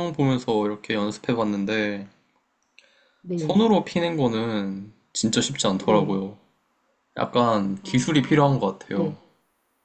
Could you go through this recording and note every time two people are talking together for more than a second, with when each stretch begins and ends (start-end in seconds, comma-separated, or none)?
7.8-9.2